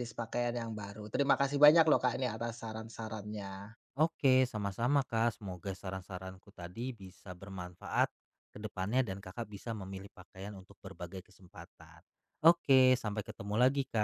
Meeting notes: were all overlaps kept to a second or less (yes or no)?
yes